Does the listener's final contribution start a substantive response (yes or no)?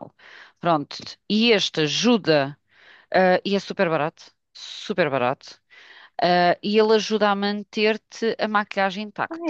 yes